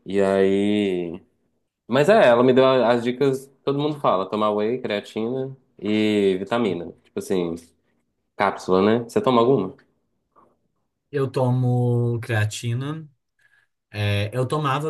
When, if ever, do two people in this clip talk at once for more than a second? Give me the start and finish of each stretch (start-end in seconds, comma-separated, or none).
none